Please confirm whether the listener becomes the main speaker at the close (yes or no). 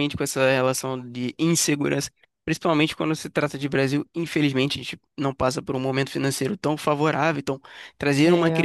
no